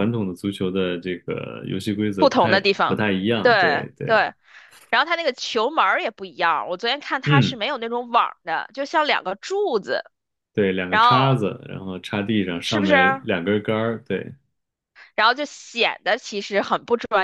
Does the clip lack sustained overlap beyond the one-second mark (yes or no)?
no